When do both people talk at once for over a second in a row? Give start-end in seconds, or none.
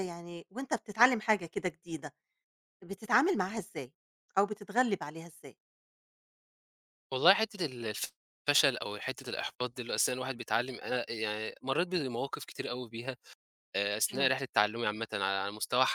none